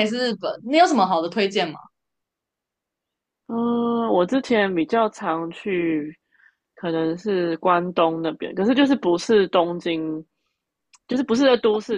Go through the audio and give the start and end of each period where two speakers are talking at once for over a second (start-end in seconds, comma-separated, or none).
none